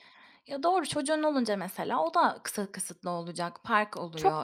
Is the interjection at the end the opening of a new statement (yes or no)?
yes